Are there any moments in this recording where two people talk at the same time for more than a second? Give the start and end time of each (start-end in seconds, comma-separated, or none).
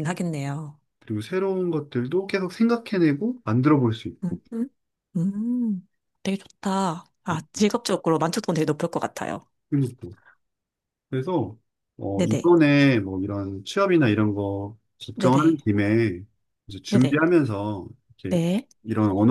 none